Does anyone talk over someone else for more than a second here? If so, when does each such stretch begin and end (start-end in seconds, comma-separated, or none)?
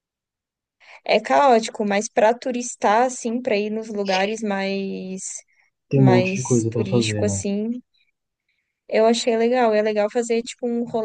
5.9-7.5